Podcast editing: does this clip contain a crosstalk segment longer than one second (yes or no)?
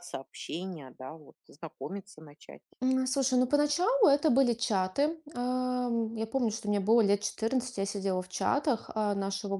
no